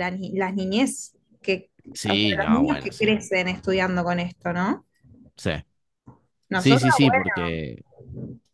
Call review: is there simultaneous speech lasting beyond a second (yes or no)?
yes